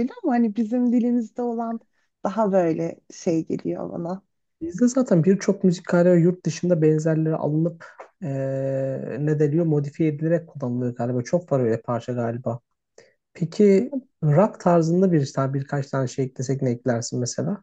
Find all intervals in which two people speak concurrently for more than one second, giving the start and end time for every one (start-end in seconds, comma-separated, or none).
none